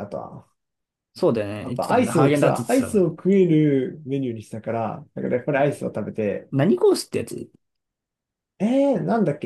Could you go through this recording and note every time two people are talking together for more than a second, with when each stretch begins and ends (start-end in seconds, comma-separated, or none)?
1.6-3.1